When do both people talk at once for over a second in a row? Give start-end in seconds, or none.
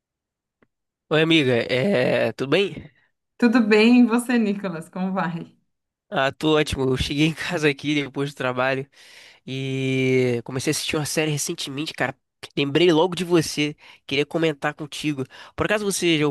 none